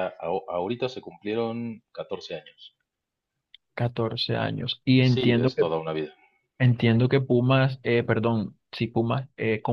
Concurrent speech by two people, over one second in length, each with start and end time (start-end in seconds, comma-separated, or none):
none